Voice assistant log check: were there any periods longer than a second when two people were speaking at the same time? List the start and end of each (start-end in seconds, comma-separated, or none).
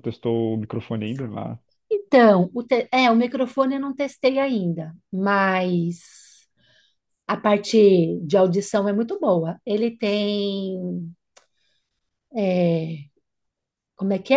none